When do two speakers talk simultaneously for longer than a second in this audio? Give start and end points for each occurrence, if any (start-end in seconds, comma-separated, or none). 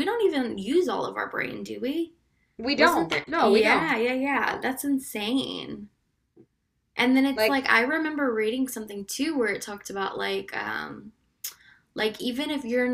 2.7-4.7